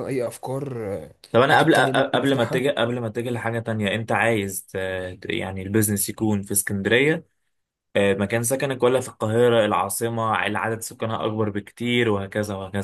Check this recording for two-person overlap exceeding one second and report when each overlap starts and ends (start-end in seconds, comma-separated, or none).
1.3-2.7